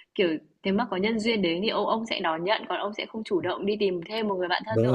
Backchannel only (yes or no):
no